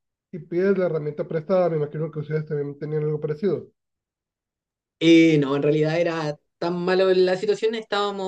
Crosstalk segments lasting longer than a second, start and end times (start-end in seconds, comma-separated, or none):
none